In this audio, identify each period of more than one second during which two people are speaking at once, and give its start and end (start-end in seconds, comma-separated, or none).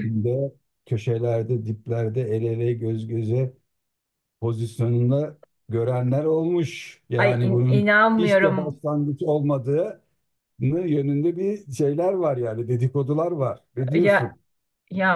7.2-8.8